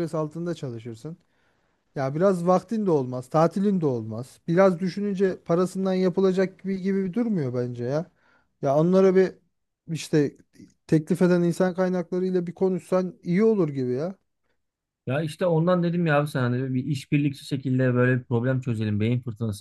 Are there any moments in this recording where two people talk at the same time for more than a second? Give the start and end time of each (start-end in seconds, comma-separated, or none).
none